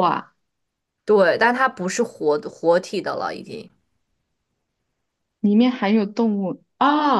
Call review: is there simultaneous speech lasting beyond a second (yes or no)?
no